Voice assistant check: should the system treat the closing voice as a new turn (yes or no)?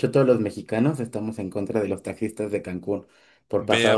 yes